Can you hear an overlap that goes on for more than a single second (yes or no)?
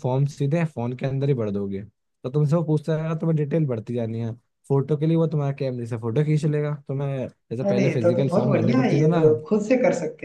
yes